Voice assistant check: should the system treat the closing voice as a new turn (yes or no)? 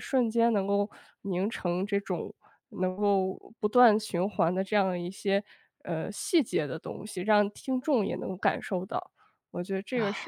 yes